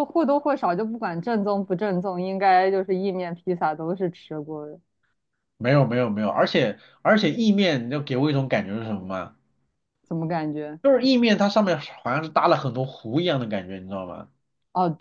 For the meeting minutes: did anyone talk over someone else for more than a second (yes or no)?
no